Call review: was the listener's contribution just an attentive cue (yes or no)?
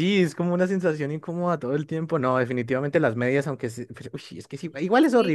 no